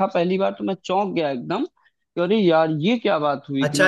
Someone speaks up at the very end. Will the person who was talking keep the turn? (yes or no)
no